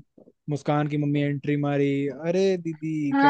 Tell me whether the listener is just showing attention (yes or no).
no